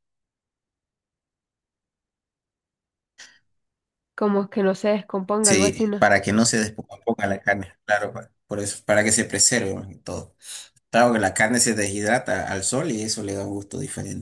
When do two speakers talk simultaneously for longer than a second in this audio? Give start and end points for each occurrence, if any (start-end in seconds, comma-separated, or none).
none